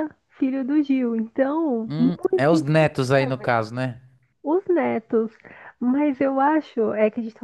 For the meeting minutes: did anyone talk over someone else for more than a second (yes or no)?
no